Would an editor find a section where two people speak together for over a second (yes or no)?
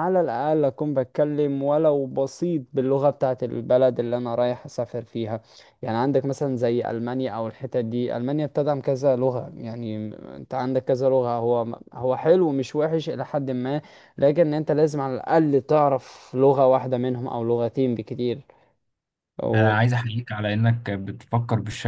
no